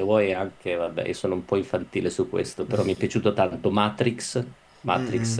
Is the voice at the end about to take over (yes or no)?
yes